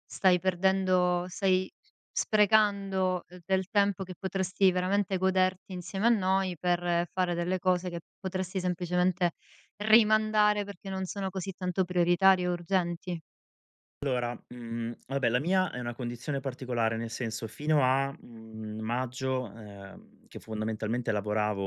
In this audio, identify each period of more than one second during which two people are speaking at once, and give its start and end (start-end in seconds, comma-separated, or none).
none